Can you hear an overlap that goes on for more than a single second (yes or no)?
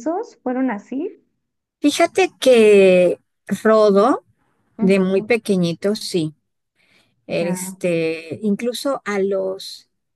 no